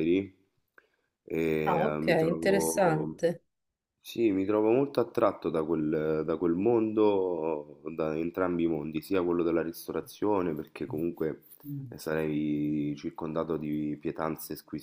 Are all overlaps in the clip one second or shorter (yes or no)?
no